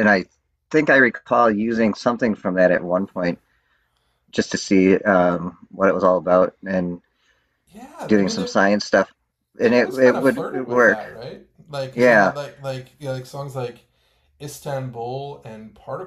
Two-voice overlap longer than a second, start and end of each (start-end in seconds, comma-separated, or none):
9.6-11.0